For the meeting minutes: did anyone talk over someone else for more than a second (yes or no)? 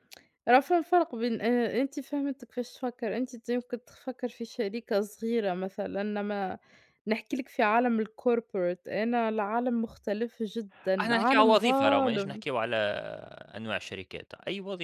yes